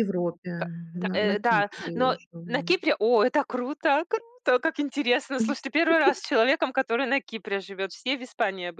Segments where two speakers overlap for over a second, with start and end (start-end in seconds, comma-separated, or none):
0.9-2.7